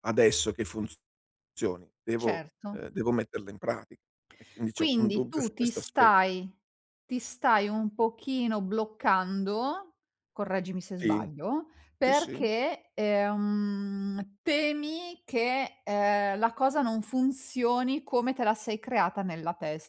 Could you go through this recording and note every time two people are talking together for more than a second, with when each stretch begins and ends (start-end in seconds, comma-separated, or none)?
4.7-6.1